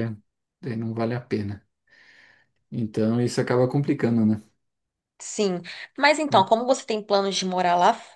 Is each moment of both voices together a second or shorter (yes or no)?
yes